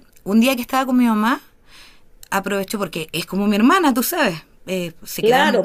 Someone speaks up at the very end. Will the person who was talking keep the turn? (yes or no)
no